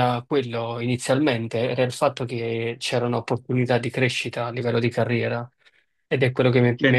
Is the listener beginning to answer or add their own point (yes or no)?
yes